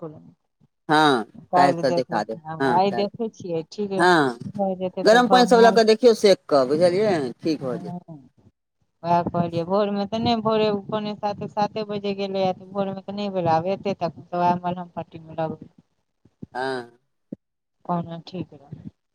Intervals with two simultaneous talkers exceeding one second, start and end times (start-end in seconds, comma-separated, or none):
0.9-3.1